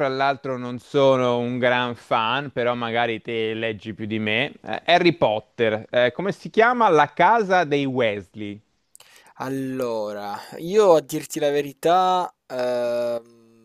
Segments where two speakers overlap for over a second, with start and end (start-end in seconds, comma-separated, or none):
none